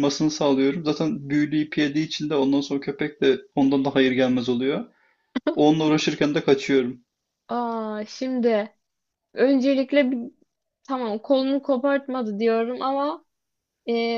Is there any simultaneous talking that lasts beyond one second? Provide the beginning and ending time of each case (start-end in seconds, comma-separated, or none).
none